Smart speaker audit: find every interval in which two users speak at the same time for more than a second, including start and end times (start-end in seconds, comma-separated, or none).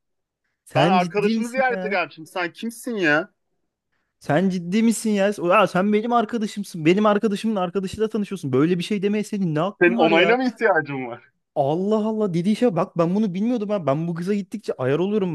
0.7-2.0